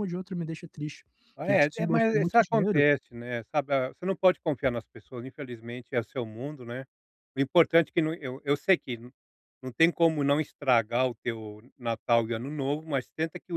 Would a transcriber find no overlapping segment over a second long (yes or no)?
no